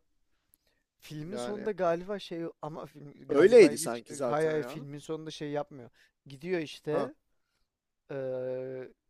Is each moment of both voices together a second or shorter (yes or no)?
no